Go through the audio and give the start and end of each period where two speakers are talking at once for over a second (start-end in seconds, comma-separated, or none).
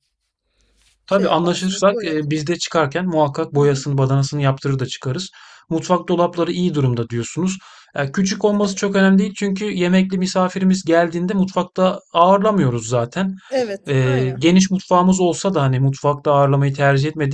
1.1-2.3